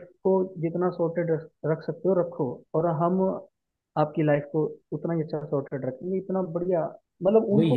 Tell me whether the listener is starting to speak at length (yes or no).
yes